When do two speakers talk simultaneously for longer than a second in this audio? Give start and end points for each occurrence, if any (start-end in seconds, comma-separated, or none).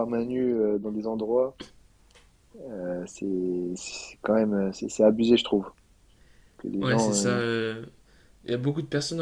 none